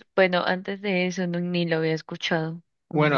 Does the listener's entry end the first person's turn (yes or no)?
yes